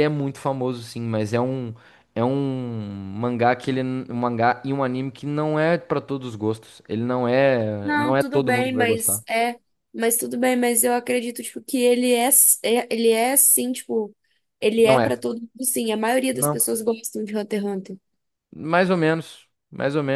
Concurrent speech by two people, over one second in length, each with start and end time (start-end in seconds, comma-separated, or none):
7.8-9.2